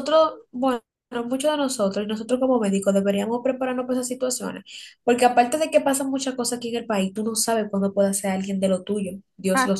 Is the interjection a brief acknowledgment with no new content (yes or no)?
no